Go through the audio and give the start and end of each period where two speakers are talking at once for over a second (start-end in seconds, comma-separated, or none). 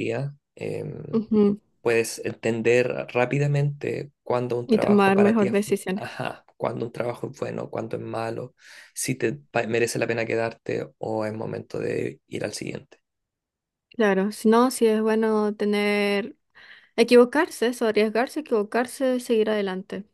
4.7-6.0